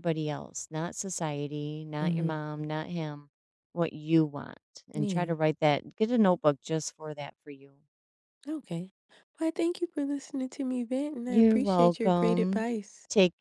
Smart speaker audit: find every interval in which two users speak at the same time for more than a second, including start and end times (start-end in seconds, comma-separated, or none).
11.3-12.7